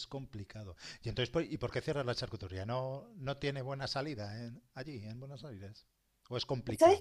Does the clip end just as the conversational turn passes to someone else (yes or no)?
yes